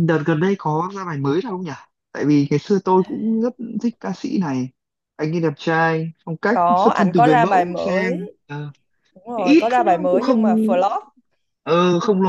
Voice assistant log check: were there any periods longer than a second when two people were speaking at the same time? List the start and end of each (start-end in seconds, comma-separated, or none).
6.5-8.3, 9.3-10.7